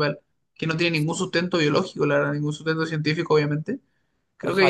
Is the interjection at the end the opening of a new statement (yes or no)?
yes